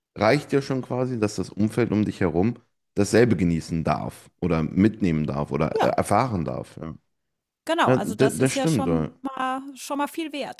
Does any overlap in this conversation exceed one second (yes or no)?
yes